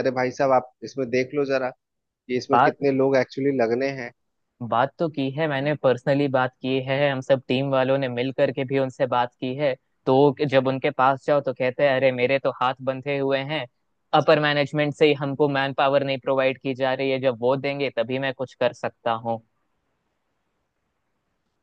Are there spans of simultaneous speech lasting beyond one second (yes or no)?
no